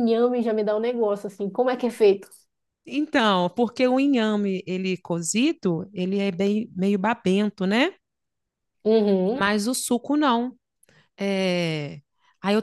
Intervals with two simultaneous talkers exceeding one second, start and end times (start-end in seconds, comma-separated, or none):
none